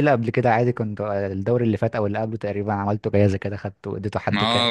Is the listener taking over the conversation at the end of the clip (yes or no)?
yes